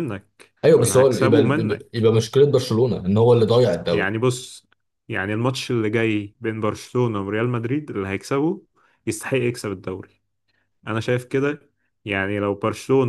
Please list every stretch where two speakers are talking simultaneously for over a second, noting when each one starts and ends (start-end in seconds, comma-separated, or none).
0.6-2.1